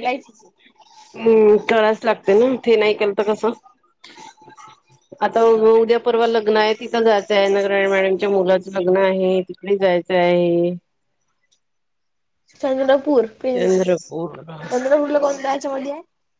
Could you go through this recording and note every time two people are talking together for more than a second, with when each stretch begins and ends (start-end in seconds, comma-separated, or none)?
none